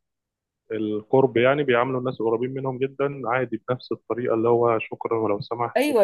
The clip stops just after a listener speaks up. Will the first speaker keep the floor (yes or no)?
no